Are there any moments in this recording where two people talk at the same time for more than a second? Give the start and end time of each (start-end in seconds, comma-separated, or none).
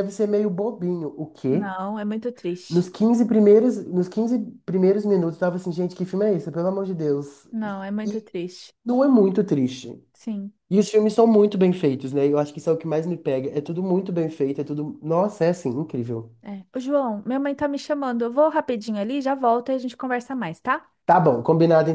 none